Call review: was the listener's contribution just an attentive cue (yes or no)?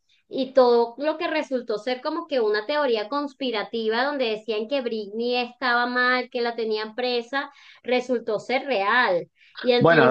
no